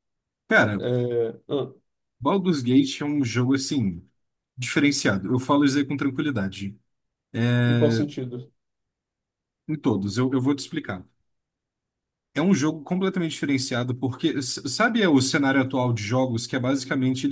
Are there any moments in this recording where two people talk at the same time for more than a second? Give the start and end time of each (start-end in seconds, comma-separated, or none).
none